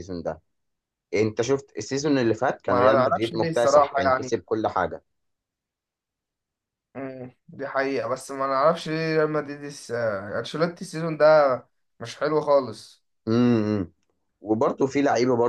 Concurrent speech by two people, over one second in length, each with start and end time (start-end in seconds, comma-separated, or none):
2.7-4.4